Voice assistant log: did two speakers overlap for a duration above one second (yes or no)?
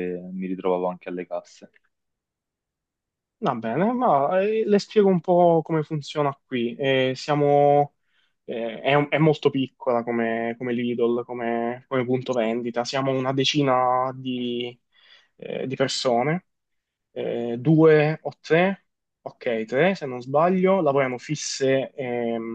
no